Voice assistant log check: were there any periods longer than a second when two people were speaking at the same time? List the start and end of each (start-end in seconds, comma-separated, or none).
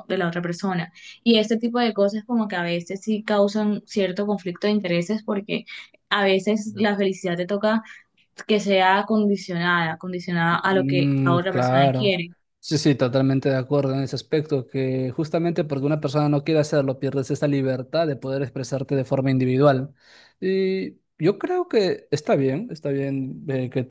10.5-12.2